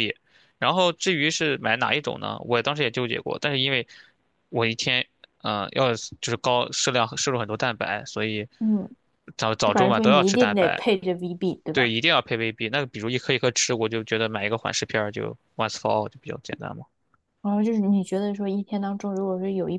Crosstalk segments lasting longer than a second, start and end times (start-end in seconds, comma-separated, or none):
9.6-10.8